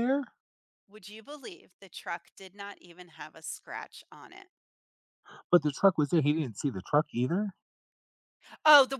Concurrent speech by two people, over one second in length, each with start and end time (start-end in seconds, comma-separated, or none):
none